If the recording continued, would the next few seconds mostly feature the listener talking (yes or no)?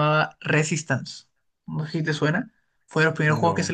no